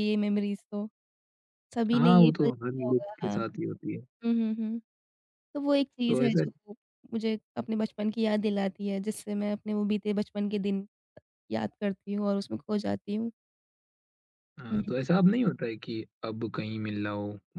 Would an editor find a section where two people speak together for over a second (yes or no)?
yes